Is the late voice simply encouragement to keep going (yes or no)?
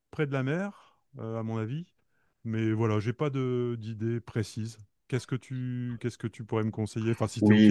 no